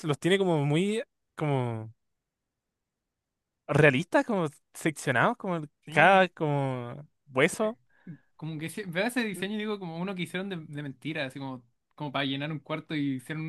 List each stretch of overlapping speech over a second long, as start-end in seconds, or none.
none